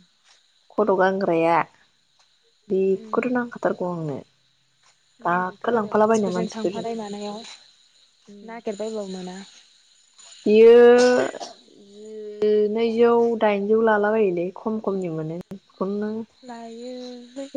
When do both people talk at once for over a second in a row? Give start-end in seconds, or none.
5.3-6.8